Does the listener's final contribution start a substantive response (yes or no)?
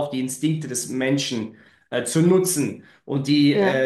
no